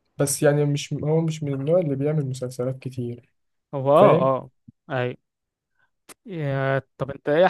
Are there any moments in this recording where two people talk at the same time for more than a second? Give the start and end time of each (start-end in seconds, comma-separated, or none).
none